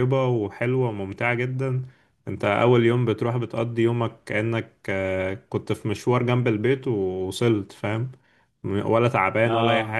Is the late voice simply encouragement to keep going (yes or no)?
yes